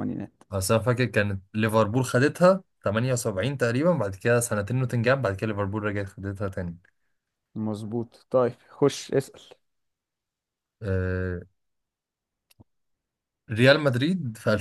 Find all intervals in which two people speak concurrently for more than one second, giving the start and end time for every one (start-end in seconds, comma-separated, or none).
none